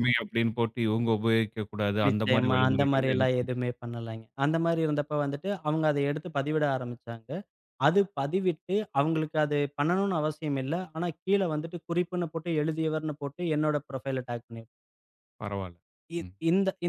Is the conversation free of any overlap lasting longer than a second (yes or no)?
no